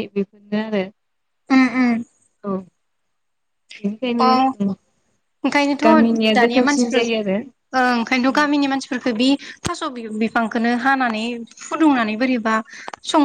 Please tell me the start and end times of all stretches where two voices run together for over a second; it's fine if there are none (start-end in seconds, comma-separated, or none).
5.8-7.6